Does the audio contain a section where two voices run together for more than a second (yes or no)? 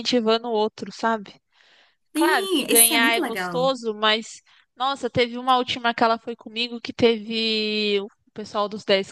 yes